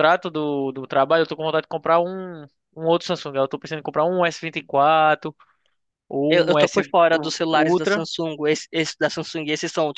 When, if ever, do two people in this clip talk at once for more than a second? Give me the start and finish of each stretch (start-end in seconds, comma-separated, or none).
6.3-8.1